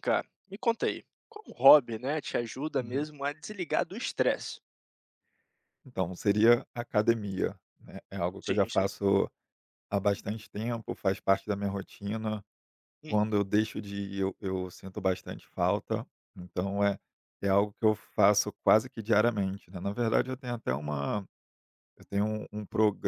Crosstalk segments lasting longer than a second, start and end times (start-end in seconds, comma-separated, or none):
none